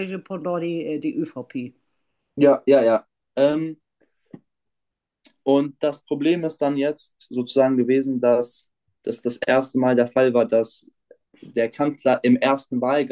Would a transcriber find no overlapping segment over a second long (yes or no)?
yes